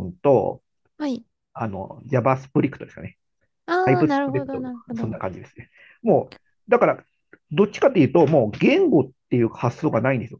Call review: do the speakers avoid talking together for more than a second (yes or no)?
no